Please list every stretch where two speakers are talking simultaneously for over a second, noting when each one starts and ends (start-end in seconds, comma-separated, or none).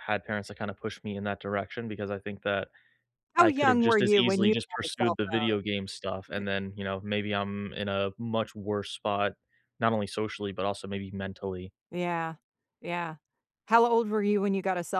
3.4-5.5